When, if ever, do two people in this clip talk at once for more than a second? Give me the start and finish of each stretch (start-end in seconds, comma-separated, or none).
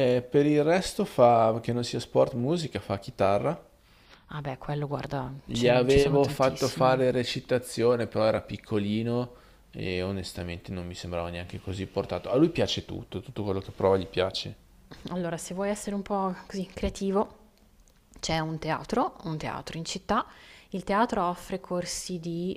5.4-7.0